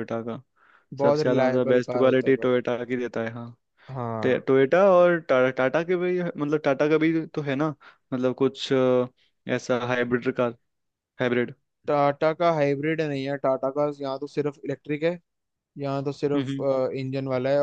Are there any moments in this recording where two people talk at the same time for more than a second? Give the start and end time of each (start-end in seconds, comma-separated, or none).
1.0-2.5